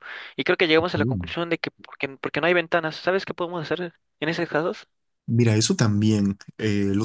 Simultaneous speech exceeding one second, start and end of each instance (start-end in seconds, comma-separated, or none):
none